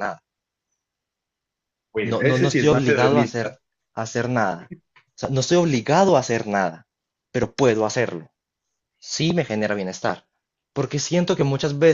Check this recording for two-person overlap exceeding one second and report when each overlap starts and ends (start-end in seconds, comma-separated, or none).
2.0-3.5